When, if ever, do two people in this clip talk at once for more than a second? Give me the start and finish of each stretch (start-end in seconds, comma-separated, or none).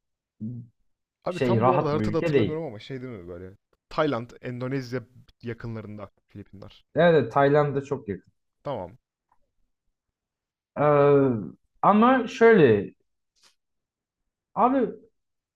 1.3-2.6